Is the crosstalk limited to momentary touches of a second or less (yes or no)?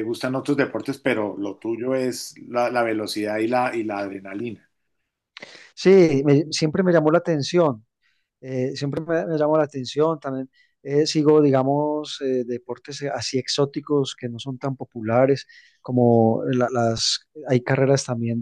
yes